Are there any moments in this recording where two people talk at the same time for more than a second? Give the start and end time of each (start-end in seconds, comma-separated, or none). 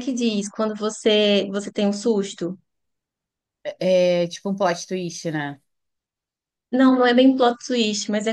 none